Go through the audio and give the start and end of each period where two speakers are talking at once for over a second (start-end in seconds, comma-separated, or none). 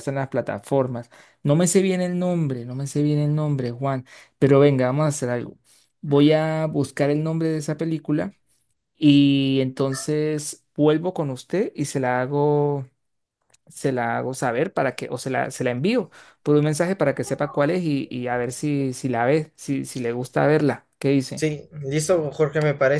none